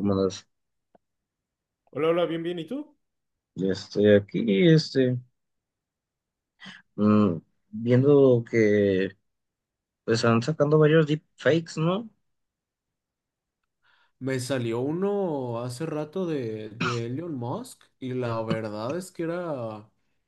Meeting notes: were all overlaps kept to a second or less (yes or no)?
yes